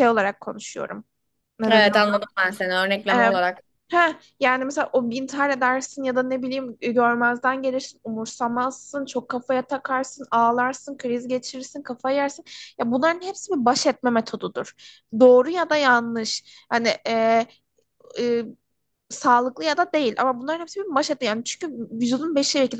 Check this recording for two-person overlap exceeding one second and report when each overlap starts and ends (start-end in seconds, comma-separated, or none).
none